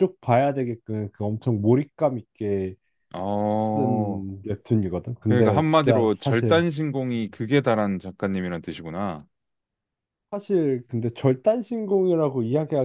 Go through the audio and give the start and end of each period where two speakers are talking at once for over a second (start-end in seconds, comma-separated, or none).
5.2-6.7